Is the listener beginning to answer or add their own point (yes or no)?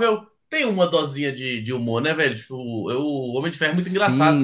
yes